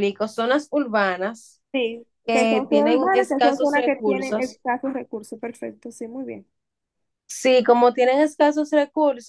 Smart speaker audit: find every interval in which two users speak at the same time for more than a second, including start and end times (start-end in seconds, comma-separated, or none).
2.2-4.6